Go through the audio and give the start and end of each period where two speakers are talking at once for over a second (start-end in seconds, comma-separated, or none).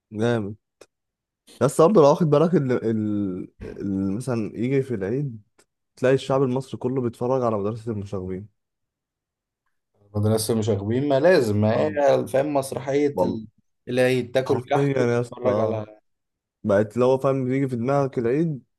14.5-15.8